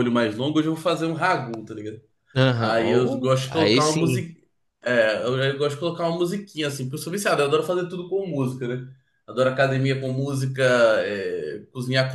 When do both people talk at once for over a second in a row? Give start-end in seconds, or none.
2.6-4.2